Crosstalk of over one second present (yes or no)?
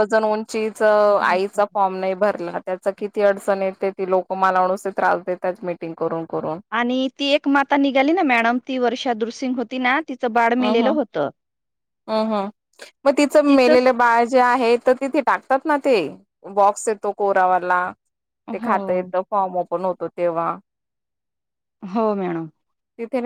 no